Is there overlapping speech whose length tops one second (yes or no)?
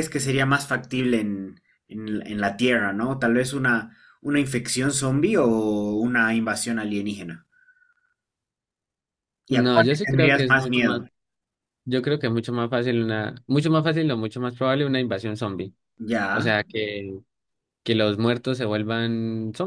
yes